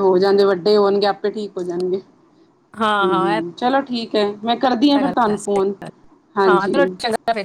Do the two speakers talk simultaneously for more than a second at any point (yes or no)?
no